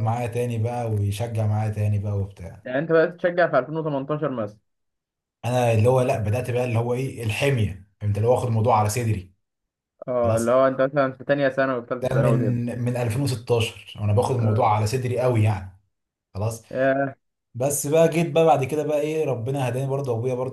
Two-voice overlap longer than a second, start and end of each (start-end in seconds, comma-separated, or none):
none